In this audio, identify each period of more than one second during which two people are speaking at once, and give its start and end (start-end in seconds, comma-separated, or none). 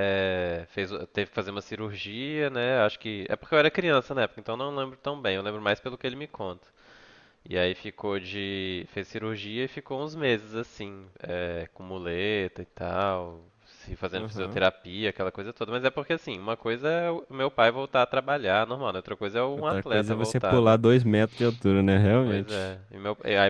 19.5-20.8